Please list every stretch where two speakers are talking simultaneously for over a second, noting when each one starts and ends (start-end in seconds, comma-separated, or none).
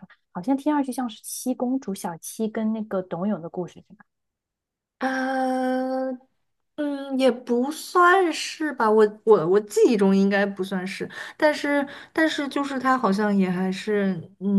none